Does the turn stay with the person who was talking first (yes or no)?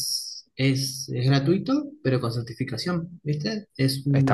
no